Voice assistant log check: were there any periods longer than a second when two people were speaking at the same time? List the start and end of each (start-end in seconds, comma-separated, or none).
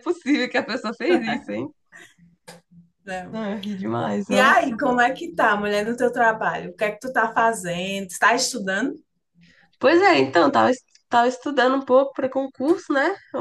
none